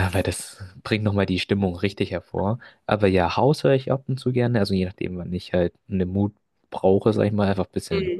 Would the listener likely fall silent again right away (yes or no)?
yes